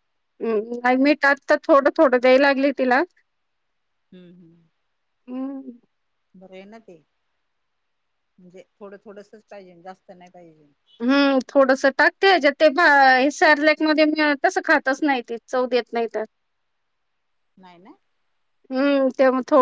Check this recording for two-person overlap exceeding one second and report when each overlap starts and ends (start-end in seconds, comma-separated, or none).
none